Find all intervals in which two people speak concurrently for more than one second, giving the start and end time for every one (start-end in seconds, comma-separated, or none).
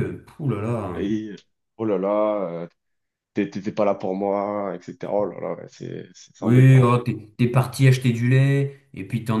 none